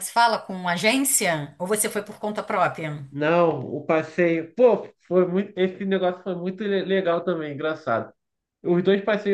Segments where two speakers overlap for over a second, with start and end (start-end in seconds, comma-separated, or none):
none